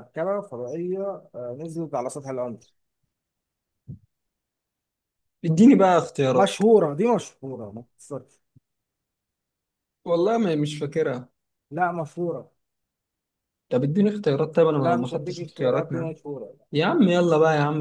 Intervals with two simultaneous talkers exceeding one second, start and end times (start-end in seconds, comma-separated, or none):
14.8-16.1